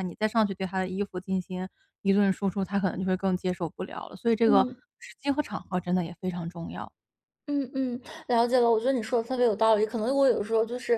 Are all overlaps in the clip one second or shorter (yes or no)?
yes